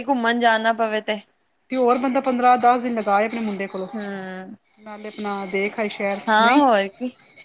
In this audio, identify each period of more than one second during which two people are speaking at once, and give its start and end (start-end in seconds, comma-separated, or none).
none